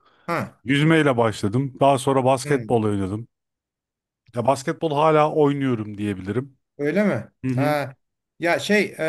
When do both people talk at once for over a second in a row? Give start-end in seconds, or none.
none